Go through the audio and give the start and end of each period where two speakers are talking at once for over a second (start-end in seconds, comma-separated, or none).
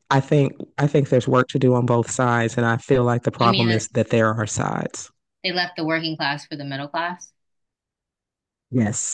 none